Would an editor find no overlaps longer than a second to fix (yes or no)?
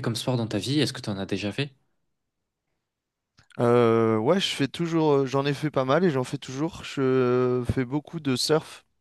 yes